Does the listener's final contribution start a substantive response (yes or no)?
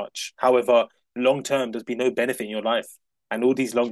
no